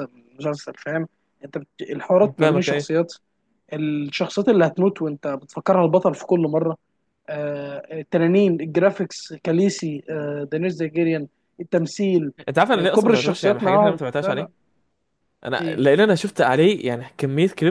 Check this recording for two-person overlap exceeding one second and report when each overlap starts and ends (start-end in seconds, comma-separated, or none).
12.7-14.5